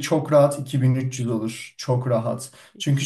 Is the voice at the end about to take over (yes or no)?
no